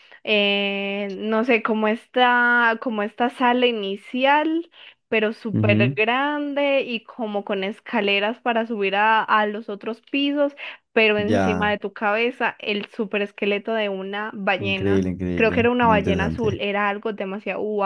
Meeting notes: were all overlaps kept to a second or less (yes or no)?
no